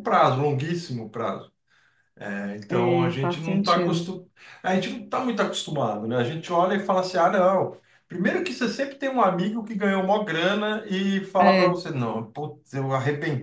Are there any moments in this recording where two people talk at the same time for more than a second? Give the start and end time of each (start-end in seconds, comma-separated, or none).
2.7-4.1